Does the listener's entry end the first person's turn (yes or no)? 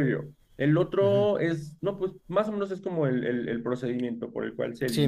yes